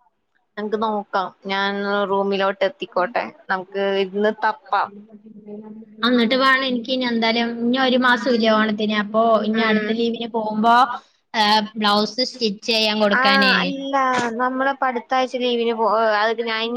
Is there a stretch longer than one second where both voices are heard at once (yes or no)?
no